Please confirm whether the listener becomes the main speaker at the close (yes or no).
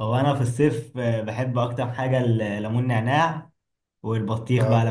no